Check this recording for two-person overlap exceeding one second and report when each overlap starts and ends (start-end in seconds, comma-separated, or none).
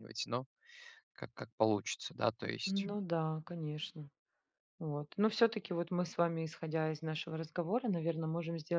none